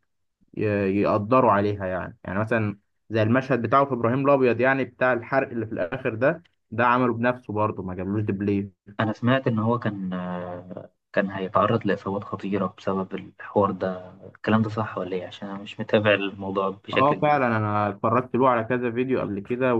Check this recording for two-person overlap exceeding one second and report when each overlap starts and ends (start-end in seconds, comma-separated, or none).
none